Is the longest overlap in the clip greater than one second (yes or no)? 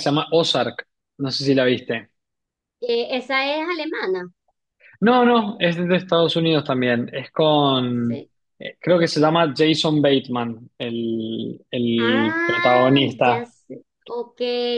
yes